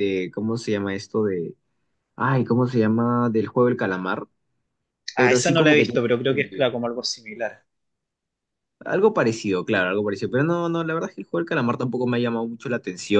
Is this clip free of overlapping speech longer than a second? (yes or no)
no